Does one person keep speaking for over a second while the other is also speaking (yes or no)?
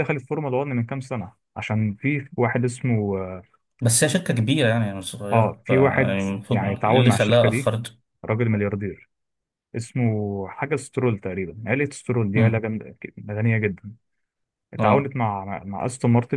yes